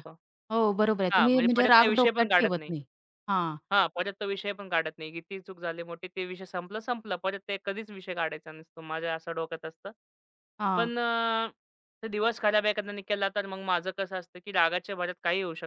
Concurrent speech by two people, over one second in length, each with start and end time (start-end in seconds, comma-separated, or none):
1.1-2.7